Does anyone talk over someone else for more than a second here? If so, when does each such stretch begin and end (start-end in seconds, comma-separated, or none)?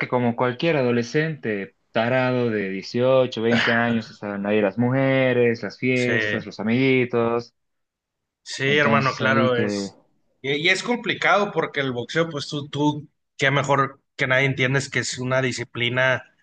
8.6-9.9